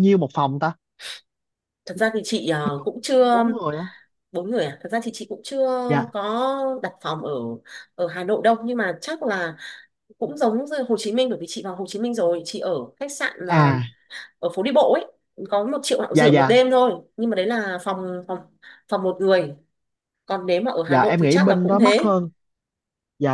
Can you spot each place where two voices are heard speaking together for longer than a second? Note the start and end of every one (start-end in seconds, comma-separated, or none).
20.9-22.1